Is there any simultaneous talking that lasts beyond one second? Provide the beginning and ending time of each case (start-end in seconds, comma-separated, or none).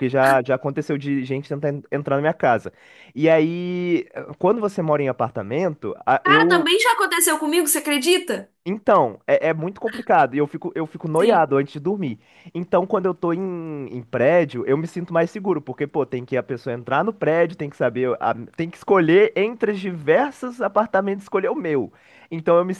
none